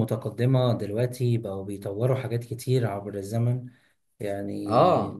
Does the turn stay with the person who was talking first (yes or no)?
yes